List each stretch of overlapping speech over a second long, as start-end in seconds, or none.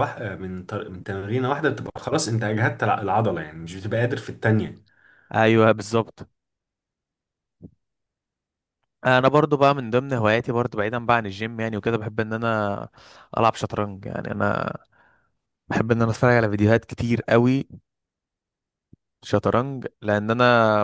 none